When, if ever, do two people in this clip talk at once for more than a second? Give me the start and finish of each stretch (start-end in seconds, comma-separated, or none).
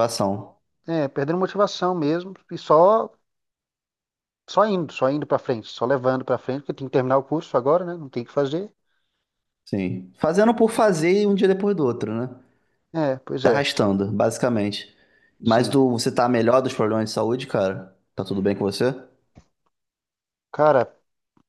none